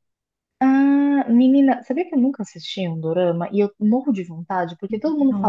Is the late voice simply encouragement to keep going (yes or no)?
yes